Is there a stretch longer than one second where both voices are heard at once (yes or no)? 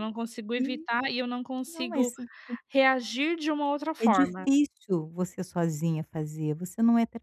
no